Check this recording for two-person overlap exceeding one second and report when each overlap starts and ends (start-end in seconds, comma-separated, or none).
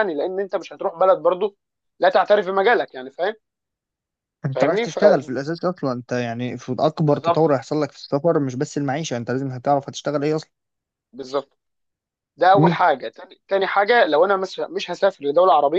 none